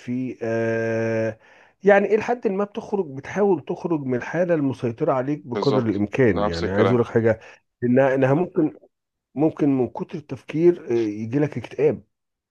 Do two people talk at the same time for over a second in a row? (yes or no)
yes